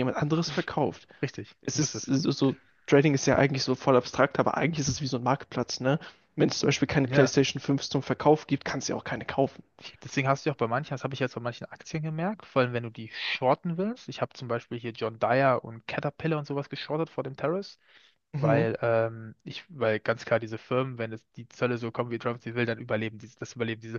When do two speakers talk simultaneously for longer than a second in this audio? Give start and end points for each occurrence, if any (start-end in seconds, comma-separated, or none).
none